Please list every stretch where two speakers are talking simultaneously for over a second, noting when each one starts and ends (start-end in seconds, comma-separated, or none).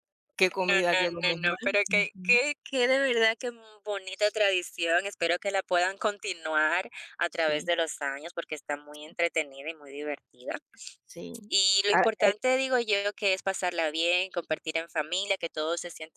0.7-2.4